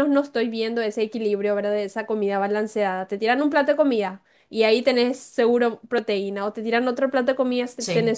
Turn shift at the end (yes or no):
no